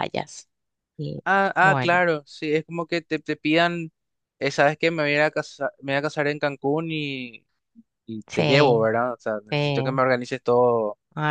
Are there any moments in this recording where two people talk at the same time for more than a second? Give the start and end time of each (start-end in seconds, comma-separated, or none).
none